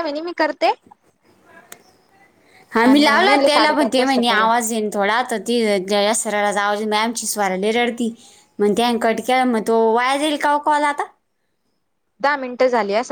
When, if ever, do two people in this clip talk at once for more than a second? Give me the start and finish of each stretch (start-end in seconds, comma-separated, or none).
2.9-4.5